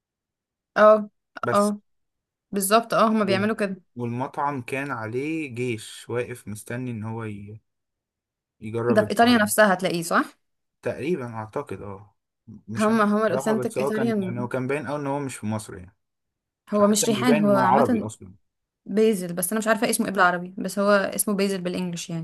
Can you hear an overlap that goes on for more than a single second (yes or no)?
yes